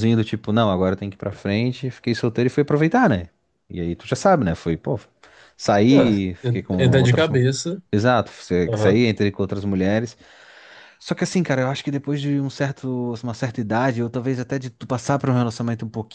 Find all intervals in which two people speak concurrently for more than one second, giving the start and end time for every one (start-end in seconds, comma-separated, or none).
5.9-7.4